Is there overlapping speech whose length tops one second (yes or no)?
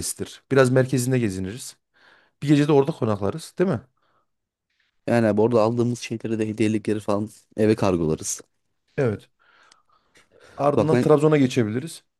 no